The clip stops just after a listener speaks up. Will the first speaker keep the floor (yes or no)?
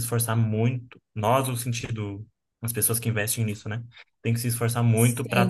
no